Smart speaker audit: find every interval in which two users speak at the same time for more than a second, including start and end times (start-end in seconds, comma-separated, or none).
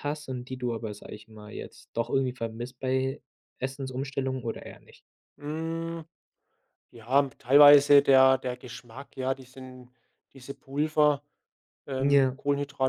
none